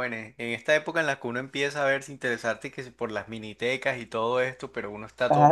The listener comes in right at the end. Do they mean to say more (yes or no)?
yes